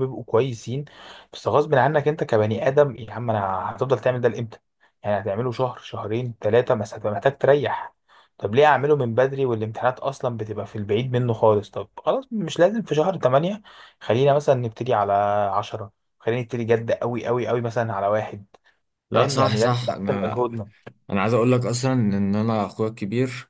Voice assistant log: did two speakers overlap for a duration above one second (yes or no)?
yes